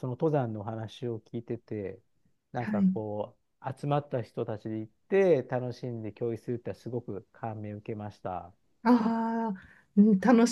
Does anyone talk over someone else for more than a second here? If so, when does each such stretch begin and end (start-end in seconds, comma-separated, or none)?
none